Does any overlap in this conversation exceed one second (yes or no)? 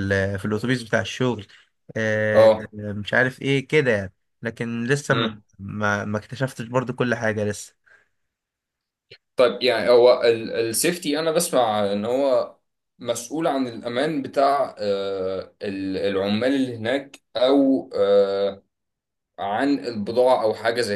no